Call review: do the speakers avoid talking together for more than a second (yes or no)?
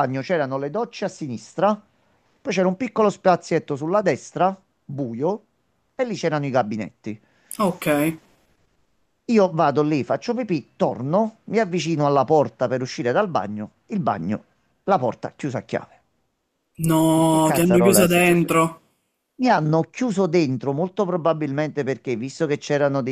no